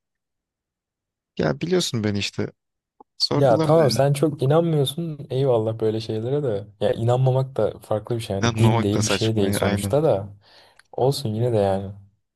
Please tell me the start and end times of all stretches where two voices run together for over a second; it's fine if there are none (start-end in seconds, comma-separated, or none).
8.4-10.0